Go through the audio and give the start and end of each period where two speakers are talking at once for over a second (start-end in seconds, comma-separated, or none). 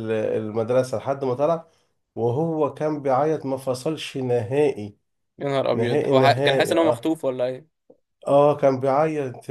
5.7-7.1